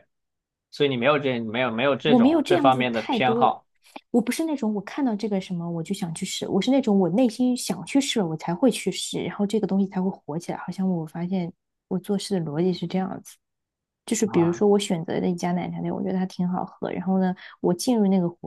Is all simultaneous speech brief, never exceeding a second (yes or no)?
no